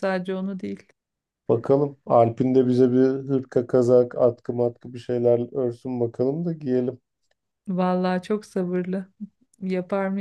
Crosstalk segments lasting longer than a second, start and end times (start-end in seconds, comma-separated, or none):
none